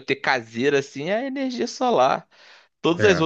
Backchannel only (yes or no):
yes